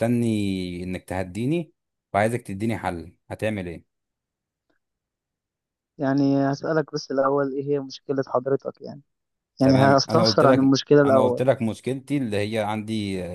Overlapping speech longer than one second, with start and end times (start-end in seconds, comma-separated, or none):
9.6-11.4